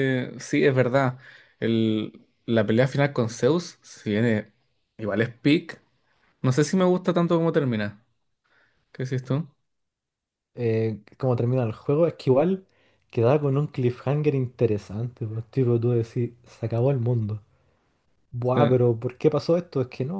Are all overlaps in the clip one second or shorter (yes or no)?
yes